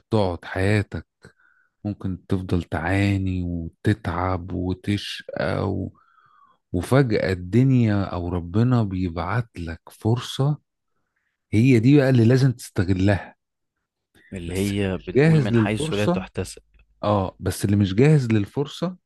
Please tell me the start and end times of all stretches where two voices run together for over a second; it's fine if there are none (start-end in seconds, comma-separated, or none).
14.5-16.3